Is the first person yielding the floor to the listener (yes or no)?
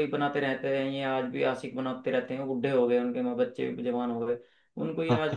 no